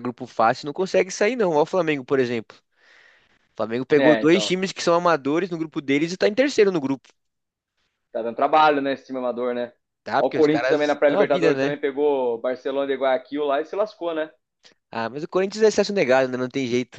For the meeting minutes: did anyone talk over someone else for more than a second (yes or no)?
yes